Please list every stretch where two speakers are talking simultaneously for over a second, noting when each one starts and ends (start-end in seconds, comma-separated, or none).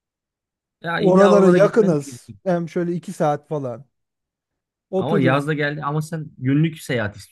1.0-2.4